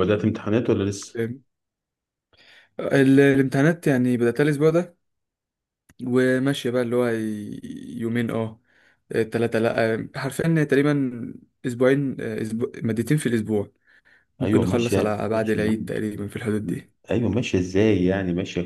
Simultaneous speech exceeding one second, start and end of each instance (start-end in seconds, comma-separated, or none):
14.4-15.9